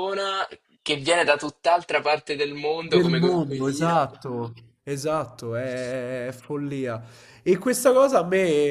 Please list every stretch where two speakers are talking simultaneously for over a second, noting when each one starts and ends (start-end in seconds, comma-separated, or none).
2.8-4.0